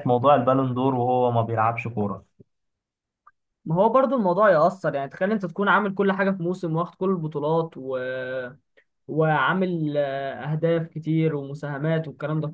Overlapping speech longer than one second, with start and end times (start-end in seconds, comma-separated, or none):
none